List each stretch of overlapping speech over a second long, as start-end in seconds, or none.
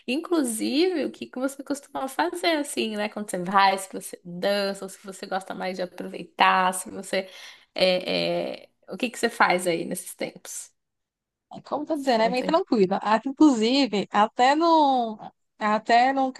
none